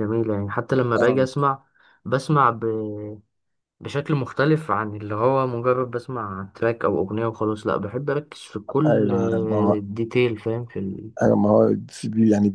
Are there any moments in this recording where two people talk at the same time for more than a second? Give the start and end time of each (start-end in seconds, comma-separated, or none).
none